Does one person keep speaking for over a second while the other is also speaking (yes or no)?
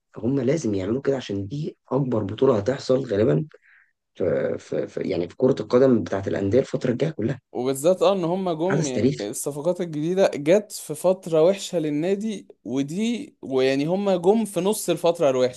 no